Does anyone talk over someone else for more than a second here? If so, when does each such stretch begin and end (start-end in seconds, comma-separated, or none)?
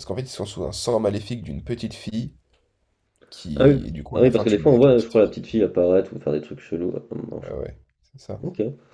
3.6-5.3